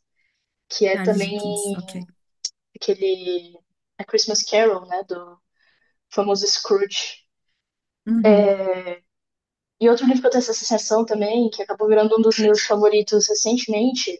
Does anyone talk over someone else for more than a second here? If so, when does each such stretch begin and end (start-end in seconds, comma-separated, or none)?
none